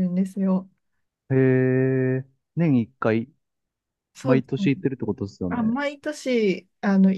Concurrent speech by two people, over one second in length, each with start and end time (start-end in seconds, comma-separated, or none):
none